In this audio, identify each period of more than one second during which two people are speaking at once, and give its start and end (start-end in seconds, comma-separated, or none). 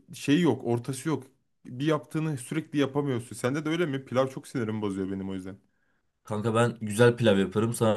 none